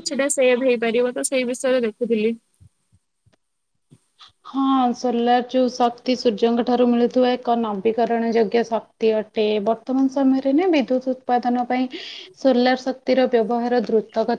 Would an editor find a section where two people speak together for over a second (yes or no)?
no